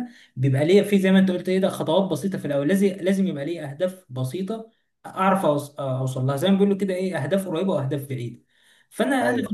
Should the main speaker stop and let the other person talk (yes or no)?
no